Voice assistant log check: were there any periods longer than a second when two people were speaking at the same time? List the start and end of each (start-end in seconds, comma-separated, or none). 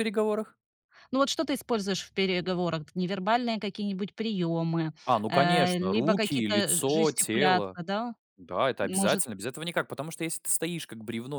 5.3-7.8